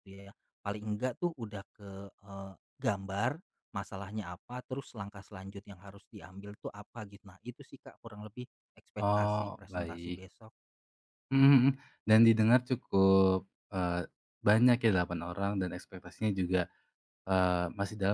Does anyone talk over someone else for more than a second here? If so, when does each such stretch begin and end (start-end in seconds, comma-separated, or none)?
8.9-10.2